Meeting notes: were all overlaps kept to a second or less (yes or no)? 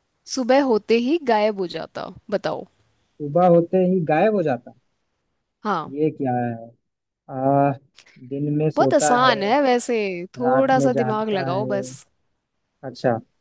no